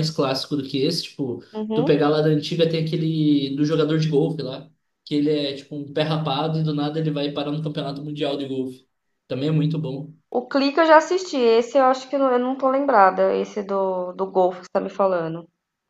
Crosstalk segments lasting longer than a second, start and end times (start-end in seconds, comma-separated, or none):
none